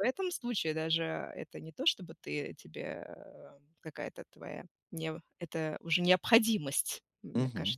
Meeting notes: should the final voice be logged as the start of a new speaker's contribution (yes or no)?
yes